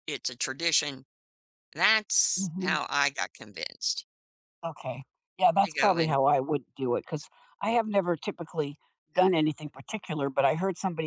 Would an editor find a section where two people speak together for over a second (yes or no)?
no